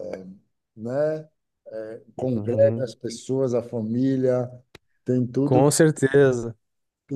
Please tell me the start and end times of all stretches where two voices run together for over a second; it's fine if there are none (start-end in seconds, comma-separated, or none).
none